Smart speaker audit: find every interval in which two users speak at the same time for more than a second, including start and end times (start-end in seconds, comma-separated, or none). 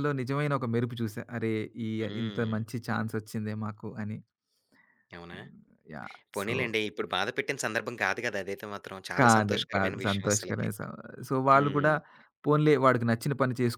9.2-10.7